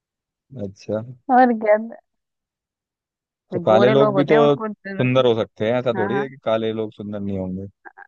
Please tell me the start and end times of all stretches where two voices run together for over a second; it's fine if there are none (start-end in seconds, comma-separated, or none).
3.5-5.3